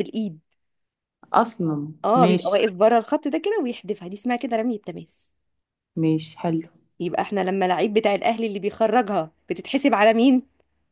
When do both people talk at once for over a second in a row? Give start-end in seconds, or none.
none